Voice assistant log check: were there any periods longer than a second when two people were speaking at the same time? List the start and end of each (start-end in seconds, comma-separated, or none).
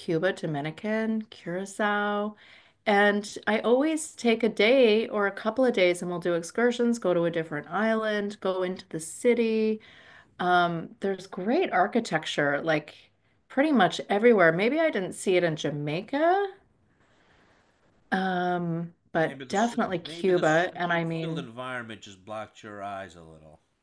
19.2-21.5